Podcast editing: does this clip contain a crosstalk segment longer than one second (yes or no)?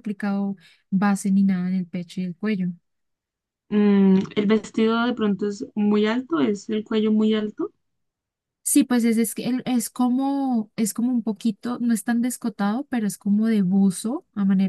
no